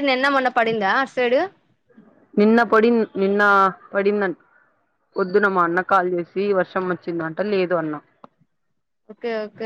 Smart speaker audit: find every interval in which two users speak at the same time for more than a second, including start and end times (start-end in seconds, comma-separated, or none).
none